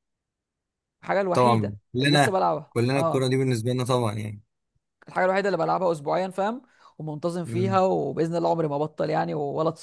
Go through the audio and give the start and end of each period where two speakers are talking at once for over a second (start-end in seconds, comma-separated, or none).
1.3-3.3